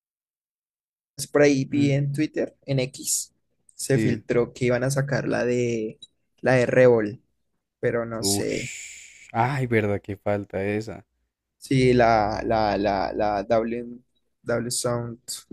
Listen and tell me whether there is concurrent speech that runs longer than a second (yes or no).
no